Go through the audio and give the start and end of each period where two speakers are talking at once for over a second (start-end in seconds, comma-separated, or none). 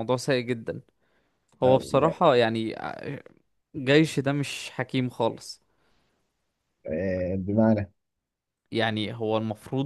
none